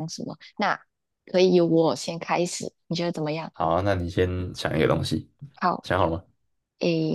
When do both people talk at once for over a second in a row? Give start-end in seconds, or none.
none